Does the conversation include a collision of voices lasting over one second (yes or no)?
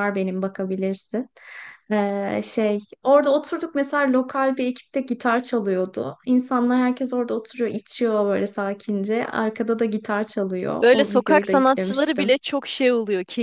yes